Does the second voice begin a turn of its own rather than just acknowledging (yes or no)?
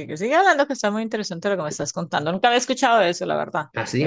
yes